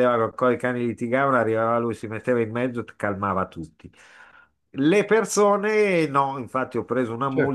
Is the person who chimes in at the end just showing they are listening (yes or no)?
yes